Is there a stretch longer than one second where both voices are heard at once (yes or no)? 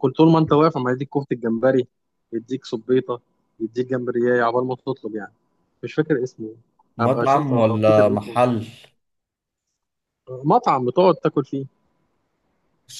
yes